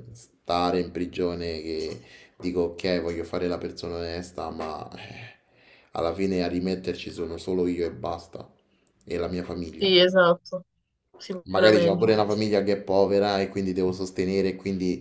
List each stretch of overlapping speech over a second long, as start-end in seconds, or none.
none